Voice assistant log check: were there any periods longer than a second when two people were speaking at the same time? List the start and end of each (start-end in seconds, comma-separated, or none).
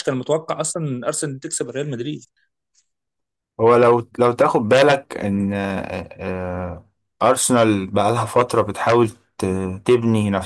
none